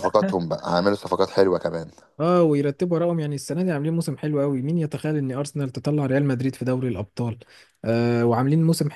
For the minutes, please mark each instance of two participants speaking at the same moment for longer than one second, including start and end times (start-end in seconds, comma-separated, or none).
none